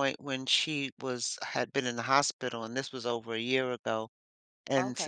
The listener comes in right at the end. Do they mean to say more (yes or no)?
no